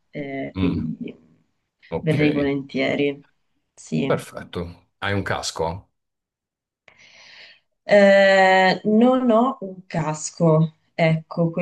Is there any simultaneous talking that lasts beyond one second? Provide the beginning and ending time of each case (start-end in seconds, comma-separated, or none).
none